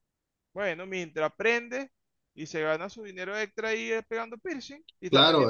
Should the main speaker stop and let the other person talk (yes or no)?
yes